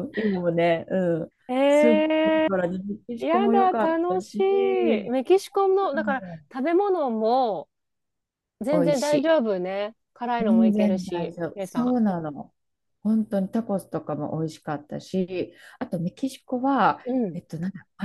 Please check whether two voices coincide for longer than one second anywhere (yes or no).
yes